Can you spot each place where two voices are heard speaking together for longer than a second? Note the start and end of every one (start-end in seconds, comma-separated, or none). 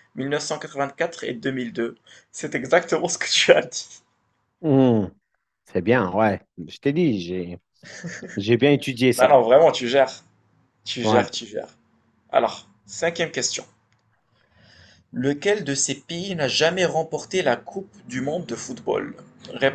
none